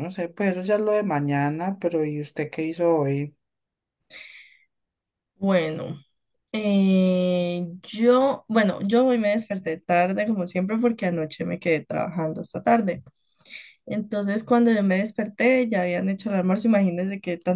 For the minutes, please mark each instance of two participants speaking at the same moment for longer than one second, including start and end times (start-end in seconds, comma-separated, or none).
none